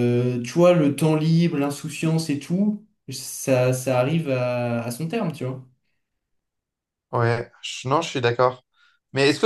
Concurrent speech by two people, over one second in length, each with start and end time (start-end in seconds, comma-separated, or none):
none